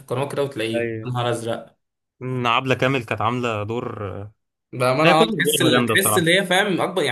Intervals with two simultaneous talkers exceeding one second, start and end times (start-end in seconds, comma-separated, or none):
5.0-6.3